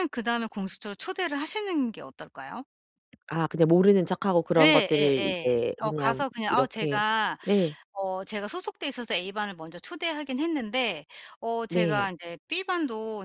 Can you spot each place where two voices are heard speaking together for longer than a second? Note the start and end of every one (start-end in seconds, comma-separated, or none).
4.6-7.0